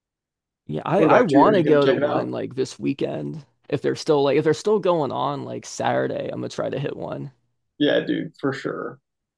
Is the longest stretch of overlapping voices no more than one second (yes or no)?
no